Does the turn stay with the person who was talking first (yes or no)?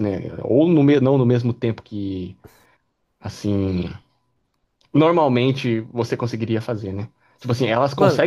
yes